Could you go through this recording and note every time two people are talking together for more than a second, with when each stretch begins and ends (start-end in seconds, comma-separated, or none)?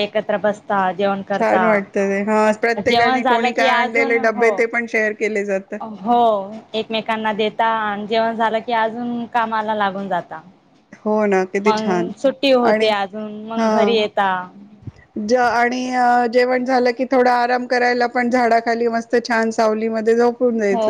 2.9-4.5